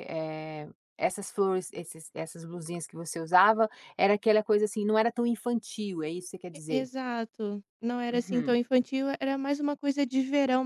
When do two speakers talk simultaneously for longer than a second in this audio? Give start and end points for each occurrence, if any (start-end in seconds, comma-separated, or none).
none